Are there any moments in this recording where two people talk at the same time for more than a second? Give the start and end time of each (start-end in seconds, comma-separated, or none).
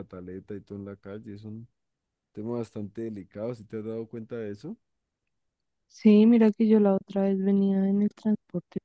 none